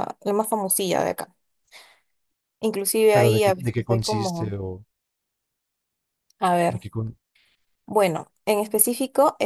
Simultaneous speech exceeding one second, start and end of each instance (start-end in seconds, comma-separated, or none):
3.1-4.5